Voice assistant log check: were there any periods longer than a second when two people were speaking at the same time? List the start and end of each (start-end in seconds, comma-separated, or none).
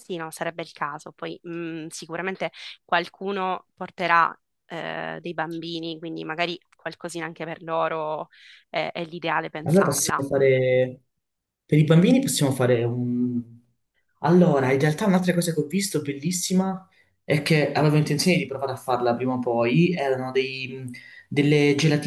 none